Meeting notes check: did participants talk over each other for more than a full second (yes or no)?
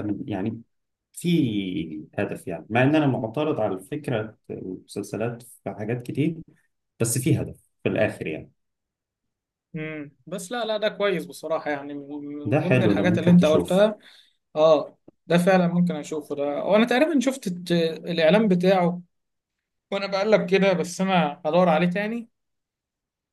yes